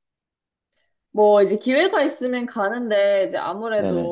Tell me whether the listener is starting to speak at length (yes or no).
no